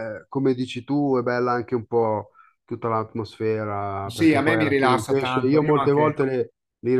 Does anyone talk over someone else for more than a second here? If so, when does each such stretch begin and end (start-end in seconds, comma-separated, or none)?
4.1-6.2